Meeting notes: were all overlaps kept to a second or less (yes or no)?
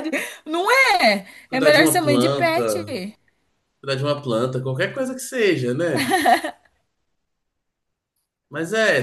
no